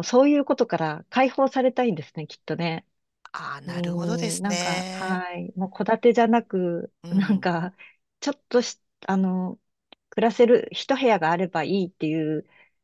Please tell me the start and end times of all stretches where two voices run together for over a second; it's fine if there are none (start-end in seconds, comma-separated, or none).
3.6-5.2